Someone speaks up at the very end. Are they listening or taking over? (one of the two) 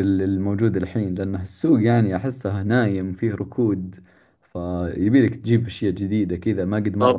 taking over